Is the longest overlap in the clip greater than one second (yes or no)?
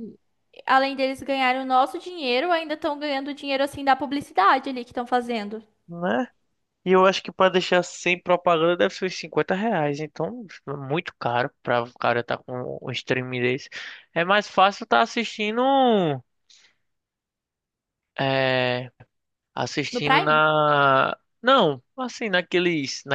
no